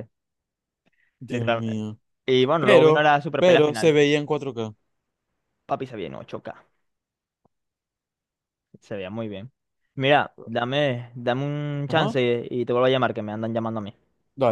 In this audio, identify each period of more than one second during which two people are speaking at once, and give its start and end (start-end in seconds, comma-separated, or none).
2.6-4.0